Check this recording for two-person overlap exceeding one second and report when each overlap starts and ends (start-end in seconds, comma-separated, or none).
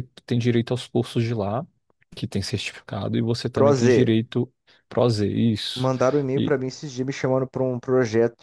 none